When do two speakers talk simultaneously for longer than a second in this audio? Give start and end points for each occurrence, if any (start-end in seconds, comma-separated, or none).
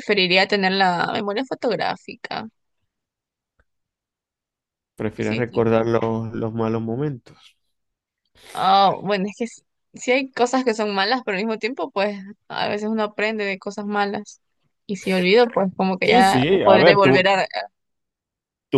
16.0-17.3